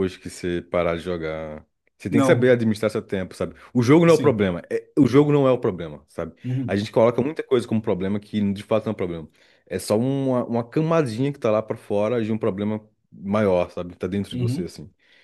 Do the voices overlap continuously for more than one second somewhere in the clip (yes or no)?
no